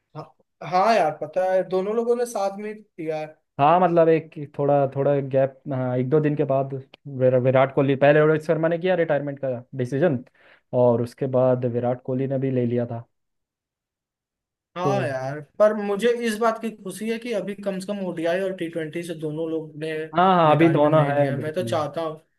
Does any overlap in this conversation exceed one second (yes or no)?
yes